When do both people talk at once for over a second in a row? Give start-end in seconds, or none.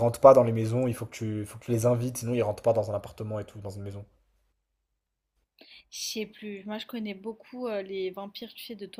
none